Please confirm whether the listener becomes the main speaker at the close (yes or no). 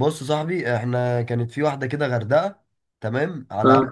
no